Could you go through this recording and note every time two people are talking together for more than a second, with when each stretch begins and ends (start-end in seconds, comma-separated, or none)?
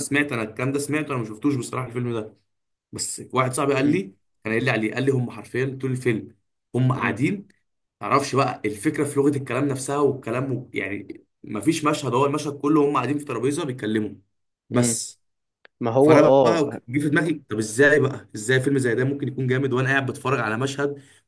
none